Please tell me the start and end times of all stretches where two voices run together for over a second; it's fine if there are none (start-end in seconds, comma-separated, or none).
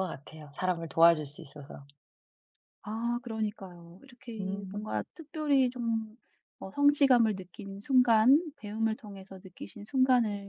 none